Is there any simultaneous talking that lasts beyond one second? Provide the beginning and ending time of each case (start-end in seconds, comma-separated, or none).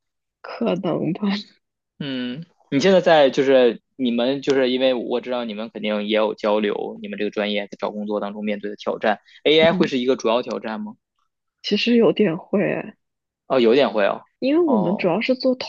none